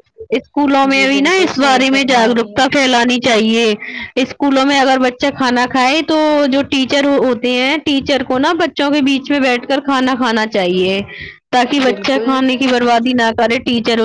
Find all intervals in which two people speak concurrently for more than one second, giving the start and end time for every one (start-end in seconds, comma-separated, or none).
0.9-2.9